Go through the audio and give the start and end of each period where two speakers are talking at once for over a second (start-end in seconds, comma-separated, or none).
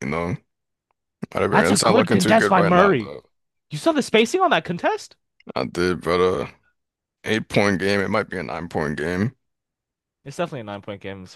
1.5-3.1